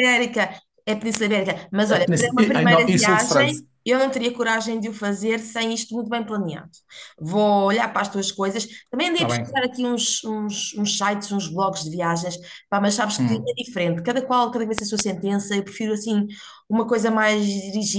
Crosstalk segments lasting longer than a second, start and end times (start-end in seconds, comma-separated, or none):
1.9-3.6